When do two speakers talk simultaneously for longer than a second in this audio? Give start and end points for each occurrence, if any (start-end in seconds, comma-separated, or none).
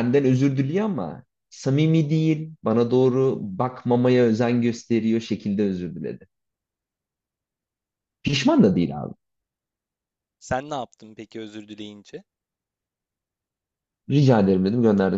none